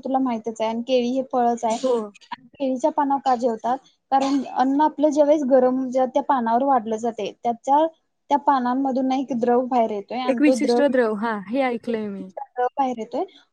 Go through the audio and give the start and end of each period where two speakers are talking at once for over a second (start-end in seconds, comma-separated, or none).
none